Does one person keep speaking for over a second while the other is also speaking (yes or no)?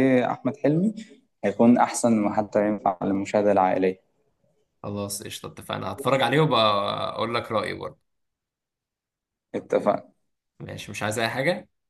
no